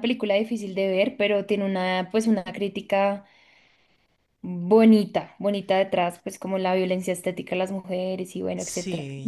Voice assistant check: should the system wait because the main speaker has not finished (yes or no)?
no